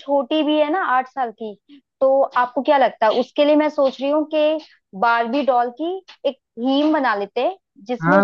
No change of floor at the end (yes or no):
no